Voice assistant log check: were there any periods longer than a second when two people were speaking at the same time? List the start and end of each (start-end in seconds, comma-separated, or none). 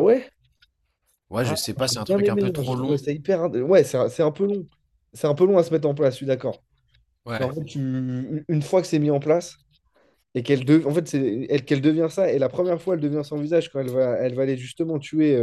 1.4-3.0